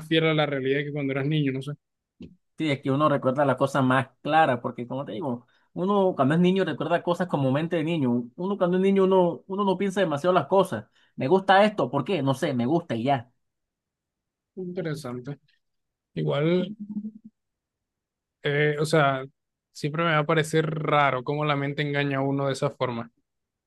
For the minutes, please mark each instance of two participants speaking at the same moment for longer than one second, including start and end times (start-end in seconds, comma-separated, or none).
none